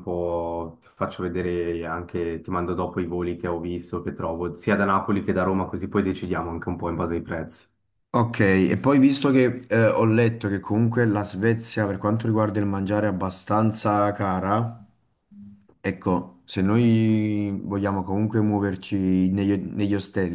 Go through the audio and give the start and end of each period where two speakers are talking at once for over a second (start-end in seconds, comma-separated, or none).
none